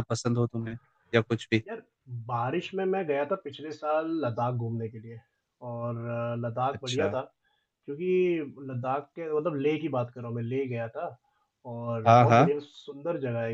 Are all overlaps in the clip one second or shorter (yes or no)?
yes